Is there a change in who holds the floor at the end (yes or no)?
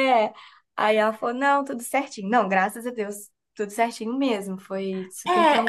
yes